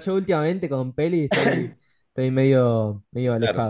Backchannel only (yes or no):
no